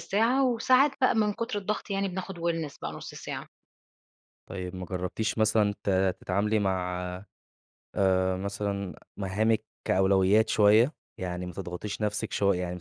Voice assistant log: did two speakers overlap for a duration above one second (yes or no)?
no